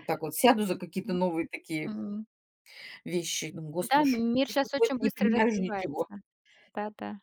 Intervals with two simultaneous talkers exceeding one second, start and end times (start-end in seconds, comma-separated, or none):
3.9-6.0